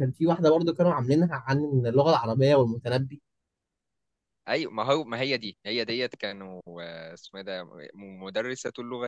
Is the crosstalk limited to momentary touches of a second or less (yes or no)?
yes